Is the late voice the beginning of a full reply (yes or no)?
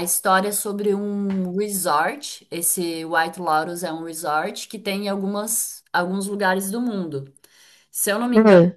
no